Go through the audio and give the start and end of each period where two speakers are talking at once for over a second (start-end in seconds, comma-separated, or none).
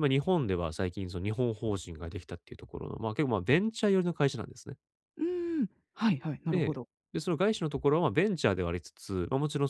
none